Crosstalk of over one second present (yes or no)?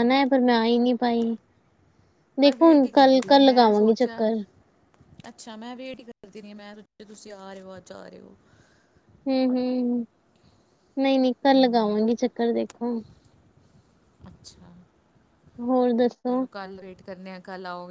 yes